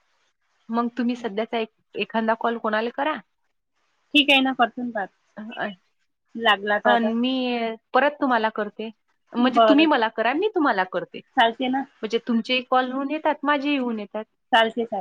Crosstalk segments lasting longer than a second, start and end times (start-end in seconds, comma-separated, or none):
none